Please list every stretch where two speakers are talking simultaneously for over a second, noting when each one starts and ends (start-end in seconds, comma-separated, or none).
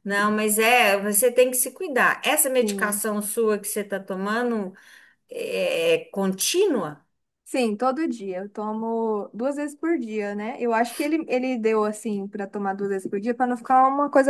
none